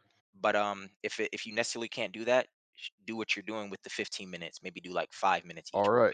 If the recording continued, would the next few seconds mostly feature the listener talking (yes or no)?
yes